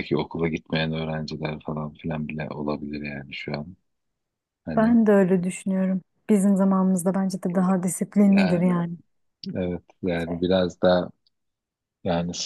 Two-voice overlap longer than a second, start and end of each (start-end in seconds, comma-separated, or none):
none